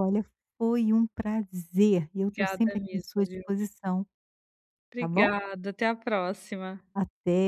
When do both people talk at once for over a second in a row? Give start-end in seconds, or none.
2.2-3.4